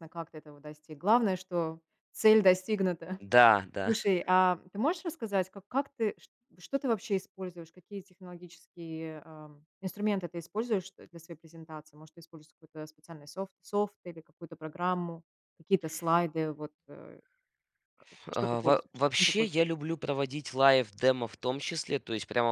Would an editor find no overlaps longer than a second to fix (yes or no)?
no